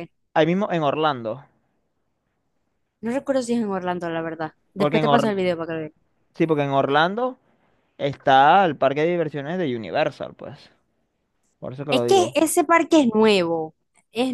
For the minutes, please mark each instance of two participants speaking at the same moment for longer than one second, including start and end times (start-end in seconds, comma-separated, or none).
none